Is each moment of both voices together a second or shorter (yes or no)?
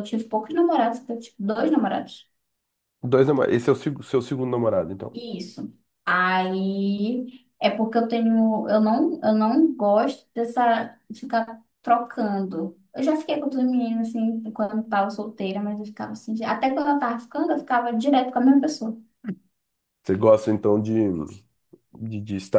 yes